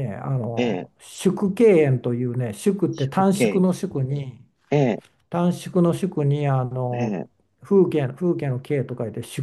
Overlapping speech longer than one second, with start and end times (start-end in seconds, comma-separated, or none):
none